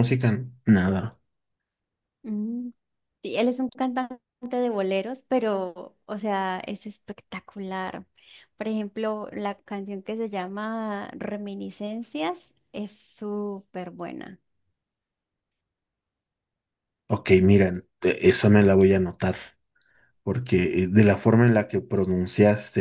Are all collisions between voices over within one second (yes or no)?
yes